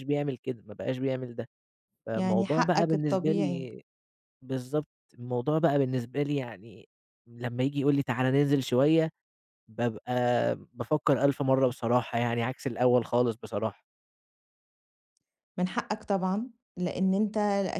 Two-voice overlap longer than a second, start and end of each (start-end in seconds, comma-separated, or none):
2.1-3.7